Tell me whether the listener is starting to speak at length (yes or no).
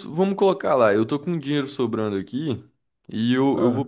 no